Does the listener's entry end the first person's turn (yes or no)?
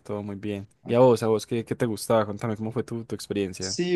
yes